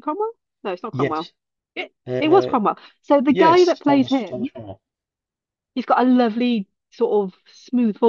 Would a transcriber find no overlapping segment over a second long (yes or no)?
no